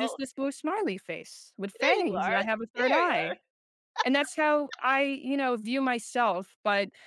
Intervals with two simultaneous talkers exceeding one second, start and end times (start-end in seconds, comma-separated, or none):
1.8-3.4